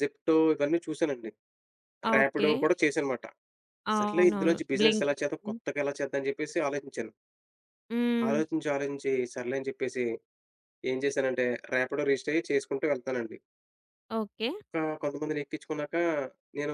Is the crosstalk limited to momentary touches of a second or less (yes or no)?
no